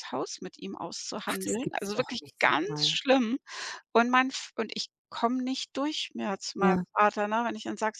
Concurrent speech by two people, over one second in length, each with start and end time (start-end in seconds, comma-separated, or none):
1.3-2.9